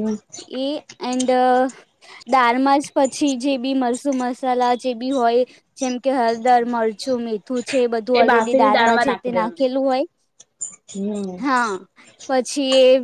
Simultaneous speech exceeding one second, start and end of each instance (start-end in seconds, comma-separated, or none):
8.2-9.7